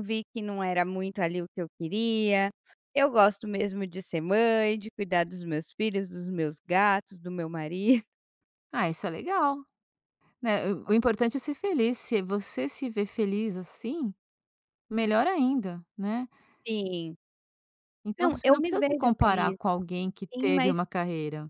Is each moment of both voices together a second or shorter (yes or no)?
no